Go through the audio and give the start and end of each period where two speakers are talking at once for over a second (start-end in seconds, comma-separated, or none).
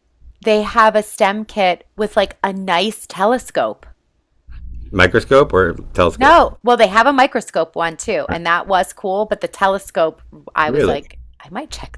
none